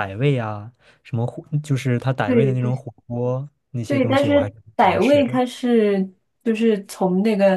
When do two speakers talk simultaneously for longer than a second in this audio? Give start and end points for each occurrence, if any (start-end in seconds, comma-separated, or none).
3.9-5.4